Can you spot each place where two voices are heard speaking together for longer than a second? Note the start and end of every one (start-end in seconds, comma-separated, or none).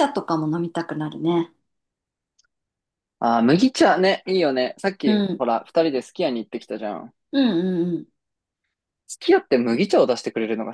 none